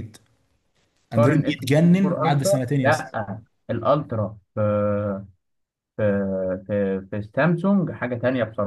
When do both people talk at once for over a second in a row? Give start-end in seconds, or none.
1.1-3.1